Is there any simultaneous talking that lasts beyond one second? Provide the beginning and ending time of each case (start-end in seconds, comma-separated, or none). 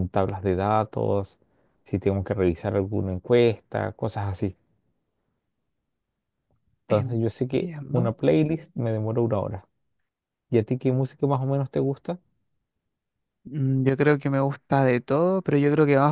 6.9-8.1